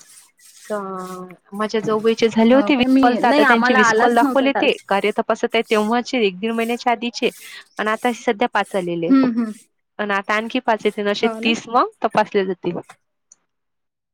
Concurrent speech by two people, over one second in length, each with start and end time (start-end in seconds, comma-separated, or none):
2.5-5.0